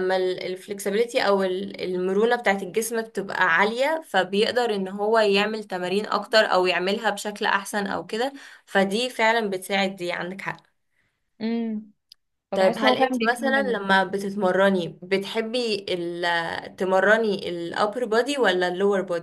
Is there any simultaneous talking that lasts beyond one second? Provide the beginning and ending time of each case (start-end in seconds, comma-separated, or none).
12.5-13.8